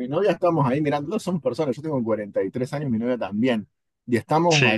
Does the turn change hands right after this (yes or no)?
no